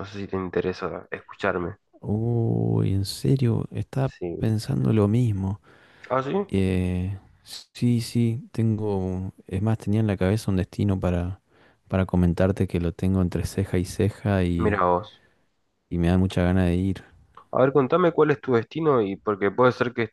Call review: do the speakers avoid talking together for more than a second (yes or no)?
yes